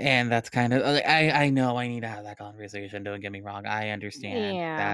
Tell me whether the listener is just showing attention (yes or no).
yes